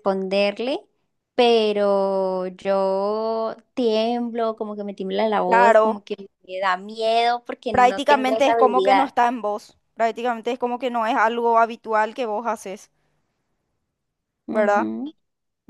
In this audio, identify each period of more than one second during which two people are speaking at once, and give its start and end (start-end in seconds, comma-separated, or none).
7.7-9.1